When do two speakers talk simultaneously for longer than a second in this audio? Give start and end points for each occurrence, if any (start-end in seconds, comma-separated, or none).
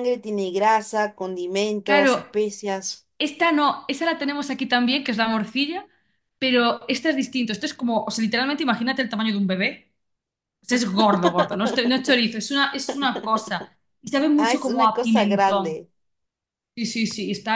14.3-15.8